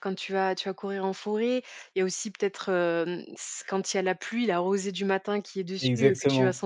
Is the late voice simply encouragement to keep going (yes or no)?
yes